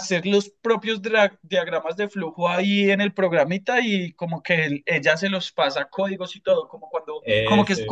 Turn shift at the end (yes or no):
no